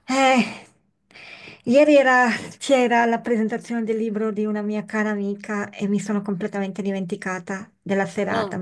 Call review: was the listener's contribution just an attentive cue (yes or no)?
yes